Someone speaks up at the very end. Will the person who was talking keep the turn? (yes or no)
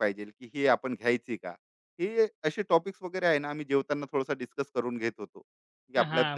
no